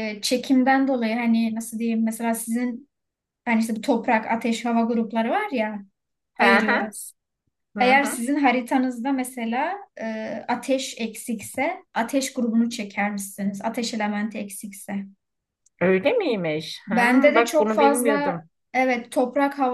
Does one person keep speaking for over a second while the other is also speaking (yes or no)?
yes